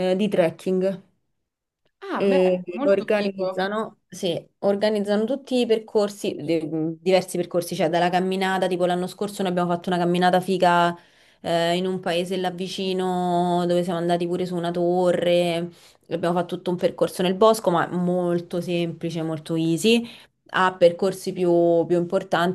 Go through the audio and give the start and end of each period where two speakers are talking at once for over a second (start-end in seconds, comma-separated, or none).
2.1-3.7